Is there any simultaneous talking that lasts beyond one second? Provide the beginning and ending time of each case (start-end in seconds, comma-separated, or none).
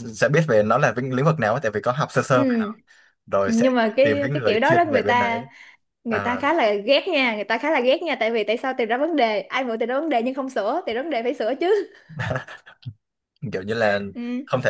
3.5-5.4